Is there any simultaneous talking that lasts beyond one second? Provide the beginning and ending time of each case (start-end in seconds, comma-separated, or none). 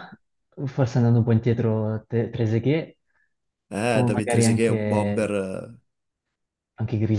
3.9-5.3